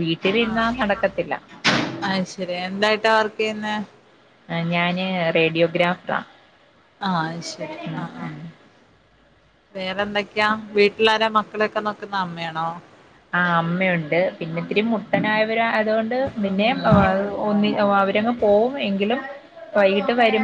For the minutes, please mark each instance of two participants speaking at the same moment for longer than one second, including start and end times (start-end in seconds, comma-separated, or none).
none